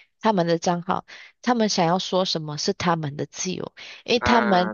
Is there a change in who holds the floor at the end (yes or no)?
no